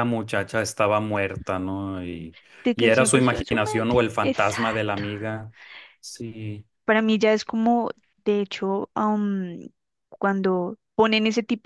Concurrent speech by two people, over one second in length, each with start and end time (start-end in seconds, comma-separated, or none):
2.8-5.0